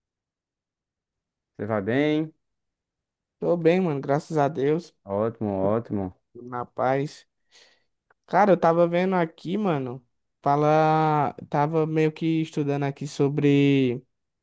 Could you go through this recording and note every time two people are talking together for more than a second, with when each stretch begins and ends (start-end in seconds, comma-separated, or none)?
none